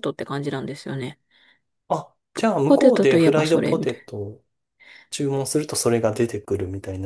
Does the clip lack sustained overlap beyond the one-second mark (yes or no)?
no